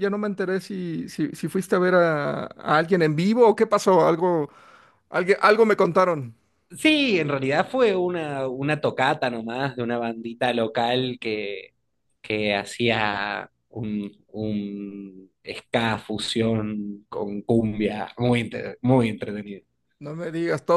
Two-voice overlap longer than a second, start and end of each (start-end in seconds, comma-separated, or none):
none